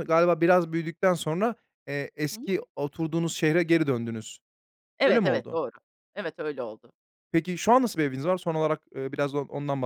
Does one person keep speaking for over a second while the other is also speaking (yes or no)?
no